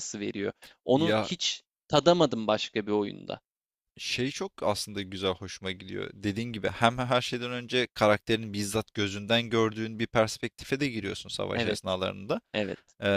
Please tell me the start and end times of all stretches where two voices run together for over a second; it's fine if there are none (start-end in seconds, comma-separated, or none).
none